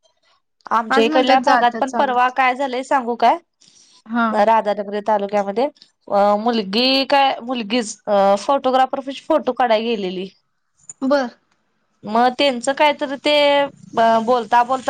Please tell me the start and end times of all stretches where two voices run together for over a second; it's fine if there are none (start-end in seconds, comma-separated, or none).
0.9-2.3